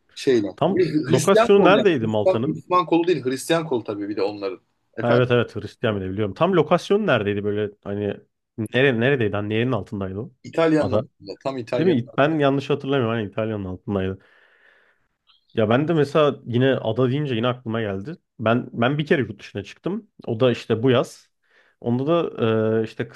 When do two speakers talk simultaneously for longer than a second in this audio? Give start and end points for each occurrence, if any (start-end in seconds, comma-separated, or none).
0.6-2.6